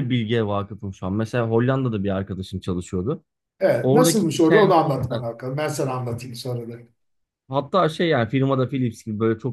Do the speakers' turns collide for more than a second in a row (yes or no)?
yes